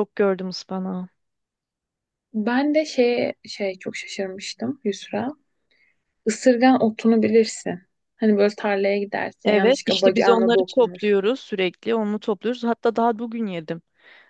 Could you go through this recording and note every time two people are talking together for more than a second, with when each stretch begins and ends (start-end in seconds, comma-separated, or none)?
9.4-11.0